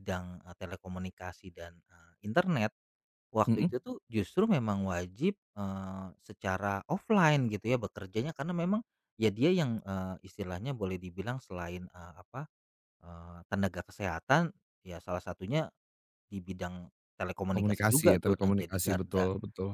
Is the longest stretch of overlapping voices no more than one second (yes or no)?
no